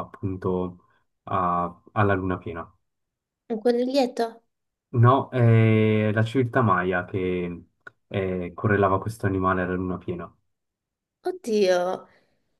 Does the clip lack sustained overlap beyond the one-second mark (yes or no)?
yes